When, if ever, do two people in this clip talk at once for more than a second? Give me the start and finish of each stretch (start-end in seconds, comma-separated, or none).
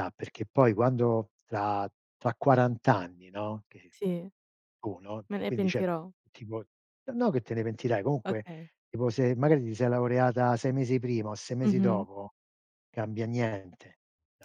none